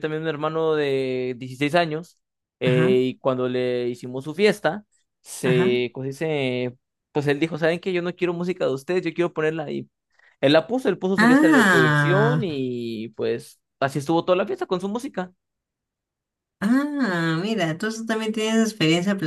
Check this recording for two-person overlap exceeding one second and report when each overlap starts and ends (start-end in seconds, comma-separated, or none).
11.2-12.4